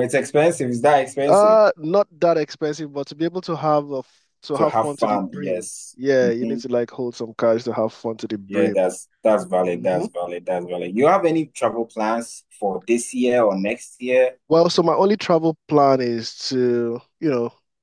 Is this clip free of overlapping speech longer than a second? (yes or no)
no